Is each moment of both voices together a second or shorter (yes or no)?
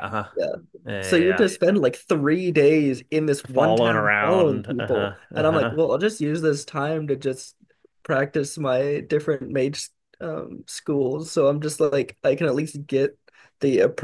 no